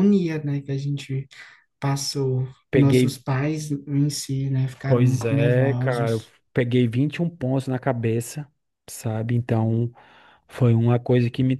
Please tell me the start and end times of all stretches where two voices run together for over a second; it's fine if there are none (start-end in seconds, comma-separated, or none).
4.9-6.3